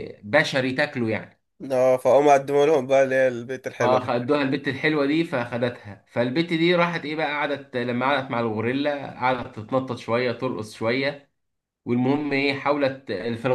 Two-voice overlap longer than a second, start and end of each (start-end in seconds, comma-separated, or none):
none